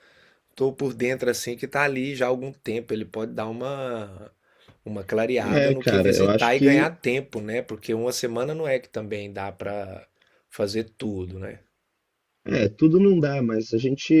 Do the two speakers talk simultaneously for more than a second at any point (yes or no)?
yes